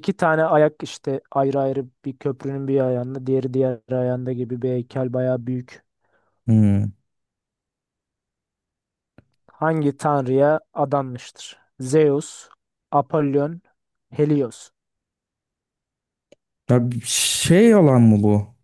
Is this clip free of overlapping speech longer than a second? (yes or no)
yes